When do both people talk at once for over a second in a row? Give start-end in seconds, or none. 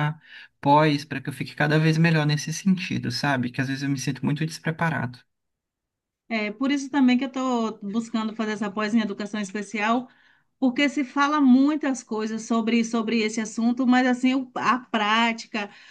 none